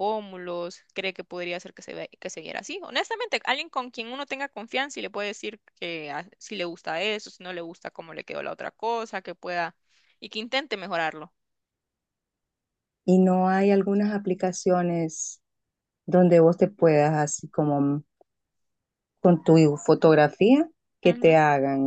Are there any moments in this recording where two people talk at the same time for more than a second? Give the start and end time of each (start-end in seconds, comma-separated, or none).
none